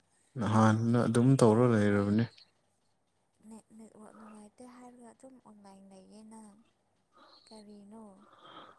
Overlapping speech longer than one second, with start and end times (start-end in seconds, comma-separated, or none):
0.7-2.1